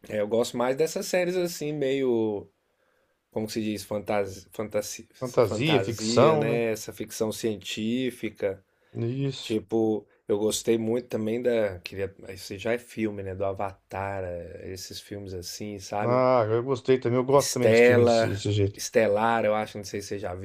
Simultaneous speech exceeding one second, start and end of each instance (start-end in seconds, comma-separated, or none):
5.4-6.7, 17.2-18.8